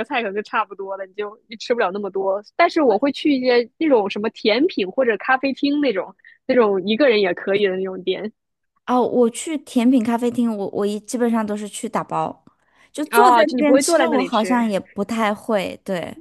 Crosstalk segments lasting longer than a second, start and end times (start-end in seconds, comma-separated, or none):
13.1-14.7